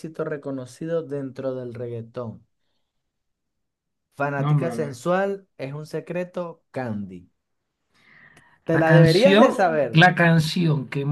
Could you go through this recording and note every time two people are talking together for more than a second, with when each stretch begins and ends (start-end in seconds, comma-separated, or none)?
8.7-10.1